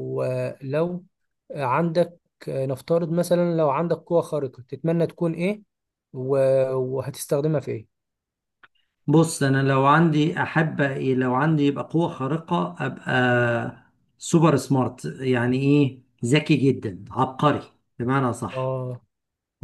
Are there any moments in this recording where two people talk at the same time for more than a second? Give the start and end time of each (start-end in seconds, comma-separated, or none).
none